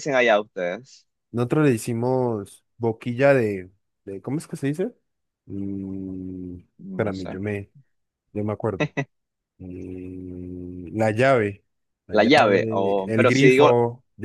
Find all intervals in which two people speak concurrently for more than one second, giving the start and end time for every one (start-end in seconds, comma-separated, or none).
12.1-13.7